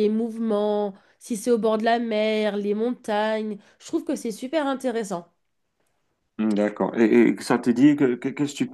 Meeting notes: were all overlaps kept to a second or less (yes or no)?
yes